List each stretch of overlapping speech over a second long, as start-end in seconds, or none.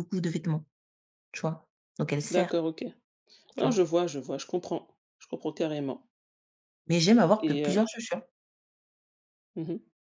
none